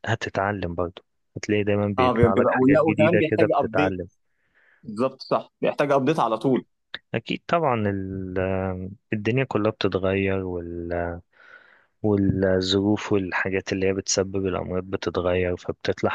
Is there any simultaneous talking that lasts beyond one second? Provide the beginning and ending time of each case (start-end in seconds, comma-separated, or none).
2.0-4.0